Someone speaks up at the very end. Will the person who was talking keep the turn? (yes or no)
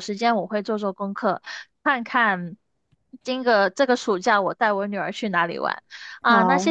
yes